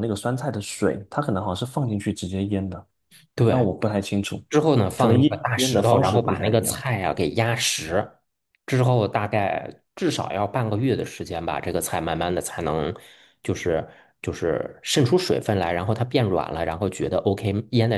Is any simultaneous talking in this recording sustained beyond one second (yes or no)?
yes